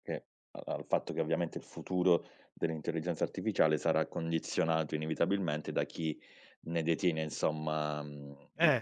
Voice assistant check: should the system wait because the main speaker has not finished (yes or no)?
yes